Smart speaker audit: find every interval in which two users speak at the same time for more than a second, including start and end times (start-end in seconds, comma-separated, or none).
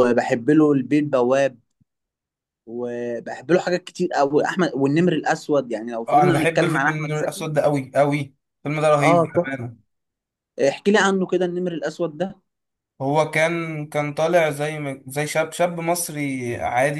6.1-7.5